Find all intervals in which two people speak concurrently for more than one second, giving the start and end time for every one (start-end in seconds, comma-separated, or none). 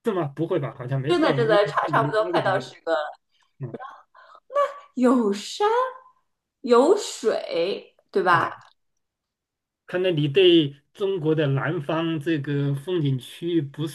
1.1-2.6